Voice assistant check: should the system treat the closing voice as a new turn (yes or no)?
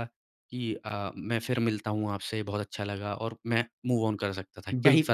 no